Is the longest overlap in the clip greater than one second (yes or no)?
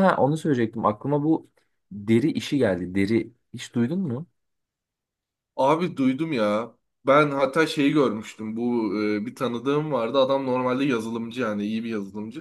no